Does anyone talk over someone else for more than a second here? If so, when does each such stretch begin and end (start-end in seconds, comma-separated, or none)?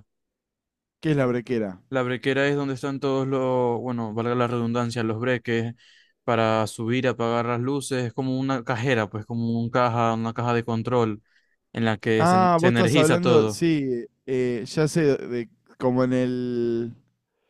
12.2-13.6